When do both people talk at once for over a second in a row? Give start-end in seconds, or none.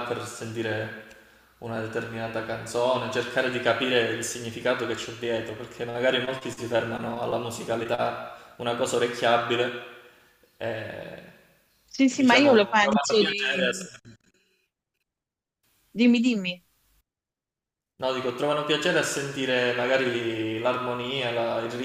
12.1-13.7